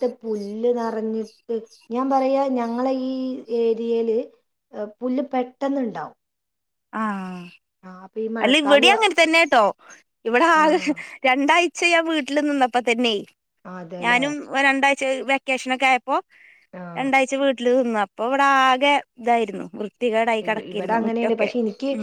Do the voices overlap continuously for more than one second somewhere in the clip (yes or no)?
no